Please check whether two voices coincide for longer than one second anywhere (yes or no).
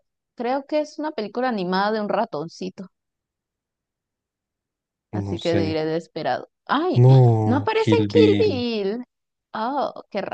yes